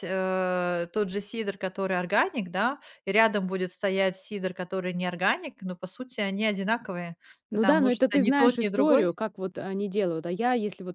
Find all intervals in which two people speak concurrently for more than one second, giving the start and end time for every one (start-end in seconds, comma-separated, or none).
7.5-9.1